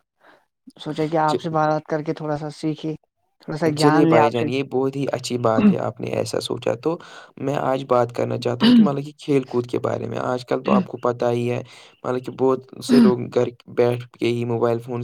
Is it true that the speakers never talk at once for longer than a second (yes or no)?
yes